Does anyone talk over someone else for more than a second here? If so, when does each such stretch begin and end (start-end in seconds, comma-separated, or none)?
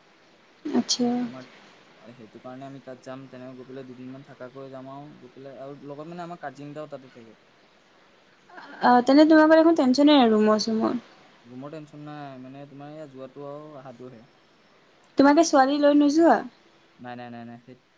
none